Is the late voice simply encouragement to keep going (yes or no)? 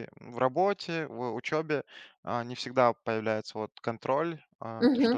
yes